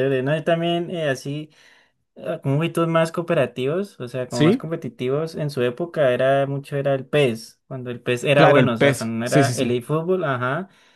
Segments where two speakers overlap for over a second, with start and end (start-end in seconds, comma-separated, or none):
8.3-9.7